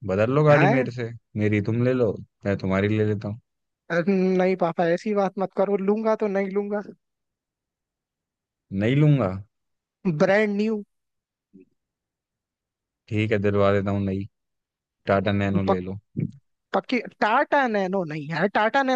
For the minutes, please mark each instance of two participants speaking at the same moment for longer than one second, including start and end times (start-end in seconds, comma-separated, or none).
none